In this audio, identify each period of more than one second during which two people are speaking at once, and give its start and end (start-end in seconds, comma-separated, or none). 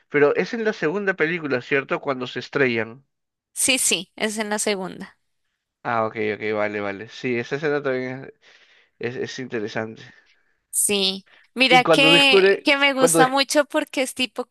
11.7-13.3